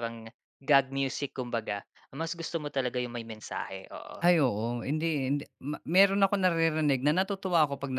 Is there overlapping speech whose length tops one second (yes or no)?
no